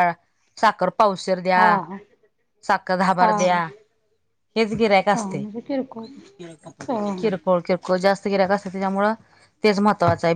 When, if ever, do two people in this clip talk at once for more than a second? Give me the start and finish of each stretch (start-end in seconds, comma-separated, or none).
none